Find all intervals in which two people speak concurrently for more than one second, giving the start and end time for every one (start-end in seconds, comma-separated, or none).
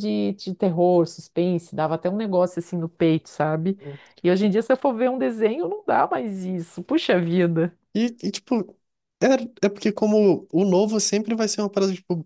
none